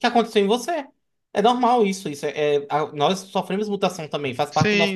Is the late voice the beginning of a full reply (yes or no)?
yes